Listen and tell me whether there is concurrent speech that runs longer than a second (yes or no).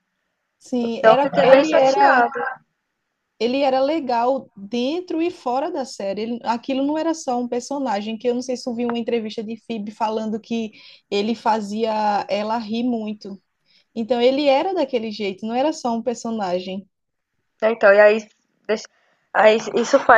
yes